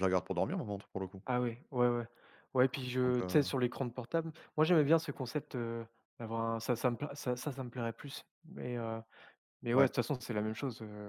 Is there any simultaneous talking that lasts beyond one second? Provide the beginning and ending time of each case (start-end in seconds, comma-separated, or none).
none